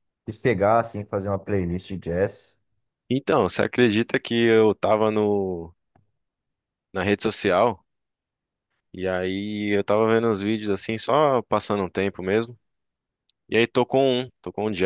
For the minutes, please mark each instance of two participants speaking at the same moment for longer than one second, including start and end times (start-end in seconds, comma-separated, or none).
none